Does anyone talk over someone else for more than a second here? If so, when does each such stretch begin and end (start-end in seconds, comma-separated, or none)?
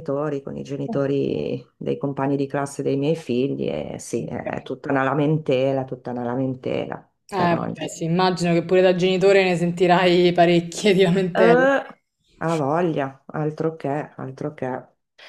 none